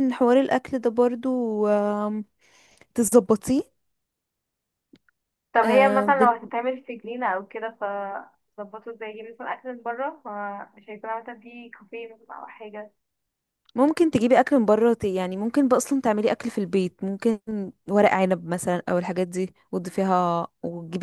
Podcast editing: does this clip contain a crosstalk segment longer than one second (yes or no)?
no